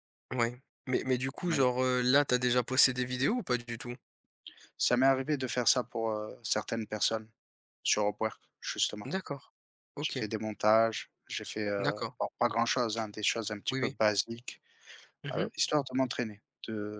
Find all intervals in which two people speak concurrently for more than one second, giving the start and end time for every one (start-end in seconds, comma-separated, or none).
none